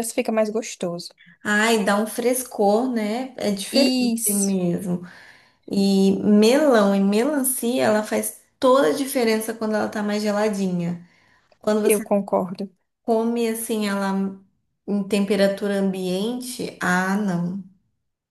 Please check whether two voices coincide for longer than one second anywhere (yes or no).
no